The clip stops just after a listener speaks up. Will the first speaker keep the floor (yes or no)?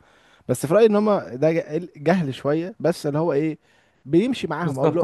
no